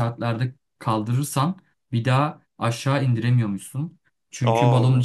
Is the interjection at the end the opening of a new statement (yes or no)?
no